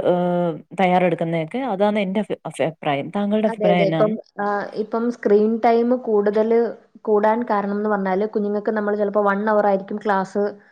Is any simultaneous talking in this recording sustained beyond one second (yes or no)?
no